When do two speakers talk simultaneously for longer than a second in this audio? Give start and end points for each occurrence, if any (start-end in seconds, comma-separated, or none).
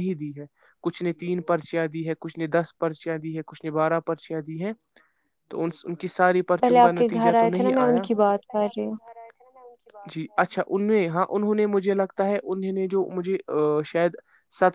6.6-8.4